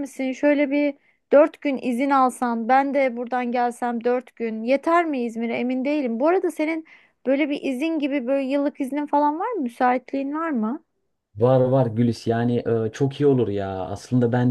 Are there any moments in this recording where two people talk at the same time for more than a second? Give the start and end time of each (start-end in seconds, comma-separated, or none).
none